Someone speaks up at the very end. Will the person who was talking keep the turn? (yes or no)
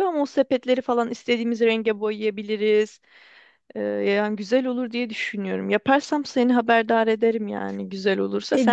no